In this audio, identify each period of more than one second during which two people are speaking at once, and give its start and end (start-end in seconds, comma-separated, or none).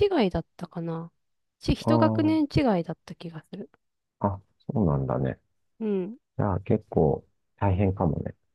none